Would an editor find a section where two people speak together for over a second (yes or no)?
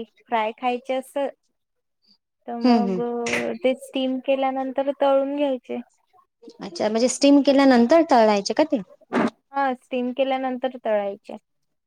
no